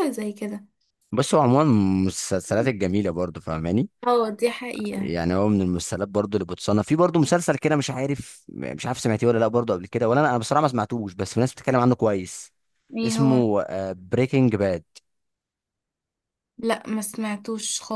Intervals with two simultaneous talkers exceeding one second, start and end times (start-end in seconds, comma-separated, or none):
none